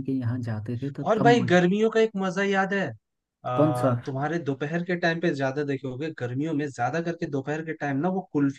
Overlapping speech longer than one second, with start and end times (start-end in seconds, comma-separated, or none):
none